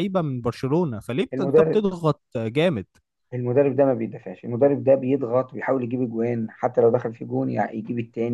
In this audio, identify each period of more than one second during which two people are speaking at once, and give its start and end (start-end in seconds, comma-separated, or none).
none